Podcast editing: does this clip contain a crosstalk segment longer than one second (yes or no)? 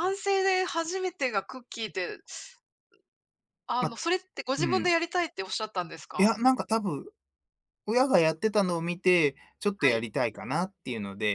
no